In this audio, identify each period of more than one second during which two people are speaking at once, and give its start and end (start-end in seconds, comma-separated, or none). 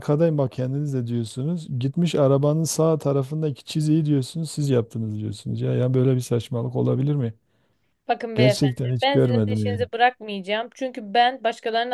8.3-9.9